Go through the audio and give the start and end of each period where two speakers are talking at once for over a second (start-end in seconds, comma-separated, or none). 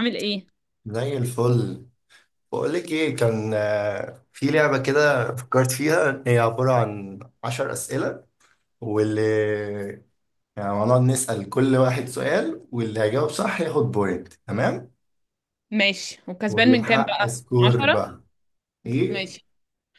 16.5-18.0